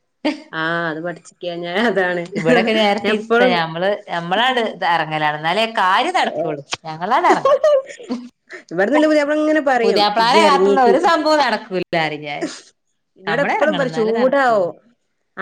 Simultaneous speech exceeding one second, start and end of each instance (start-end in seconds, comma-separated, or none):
13.3-14.7